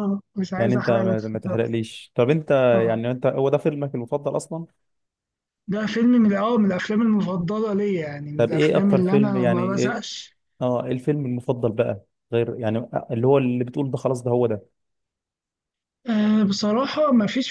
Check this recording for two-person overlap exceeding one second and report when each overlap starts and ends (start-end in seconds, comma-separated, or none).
0.6-1.8, 8.4-10.0